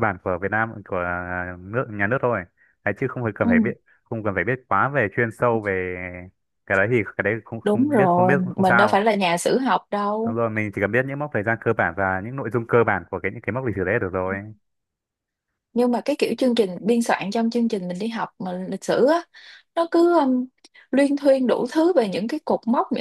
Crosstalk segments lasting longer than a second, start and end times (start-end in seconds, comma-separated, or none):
7.6-9.0